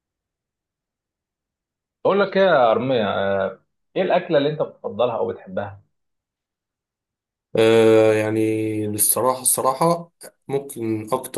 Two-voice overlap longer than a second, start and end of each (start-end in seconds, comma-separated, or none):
none